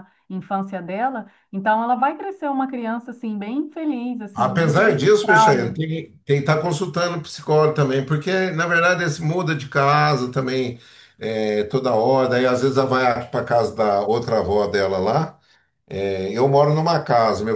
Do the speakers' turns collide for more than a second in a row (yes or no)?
yes